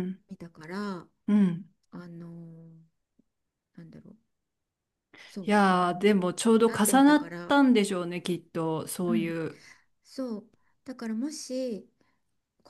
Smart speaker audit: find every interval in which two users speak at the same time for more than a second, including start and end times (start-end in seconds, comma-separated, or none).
5.4-7.5